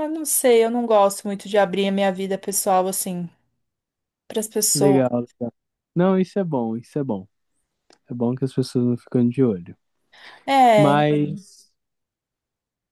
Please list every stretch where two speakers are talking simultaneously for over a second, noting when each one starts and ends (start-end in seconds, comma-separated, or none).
none